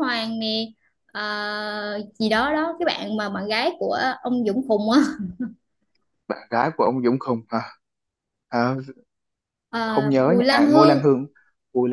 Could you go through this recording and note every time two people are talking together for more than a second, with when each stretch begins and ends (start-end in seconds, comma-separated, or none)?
9.8-11.2